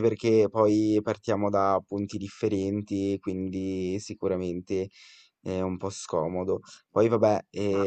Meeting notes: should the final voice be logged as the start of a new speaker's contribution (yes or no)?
no